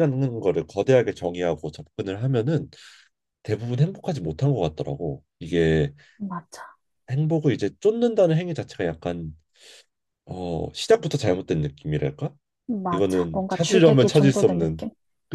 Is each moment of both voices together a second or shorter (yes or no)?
no